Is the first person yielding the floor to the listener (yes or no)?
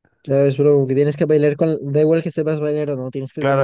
yes